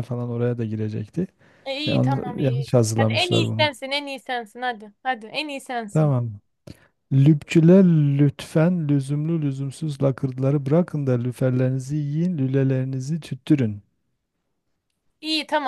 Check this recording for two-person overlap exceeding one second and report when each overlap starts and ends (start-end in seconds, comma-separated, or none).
1.9-3.7